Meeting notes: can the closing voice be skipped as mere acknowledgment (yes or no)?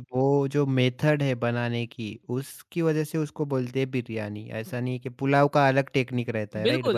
no